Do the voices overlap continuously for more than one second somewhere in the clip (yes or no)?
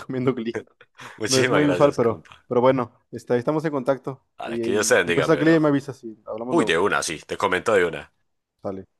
yes